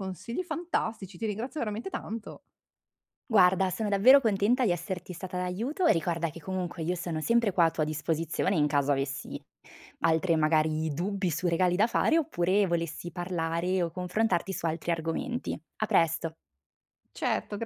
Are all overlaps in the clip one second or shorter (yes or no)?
yes